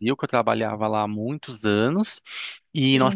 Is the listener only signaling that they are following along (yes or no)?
yes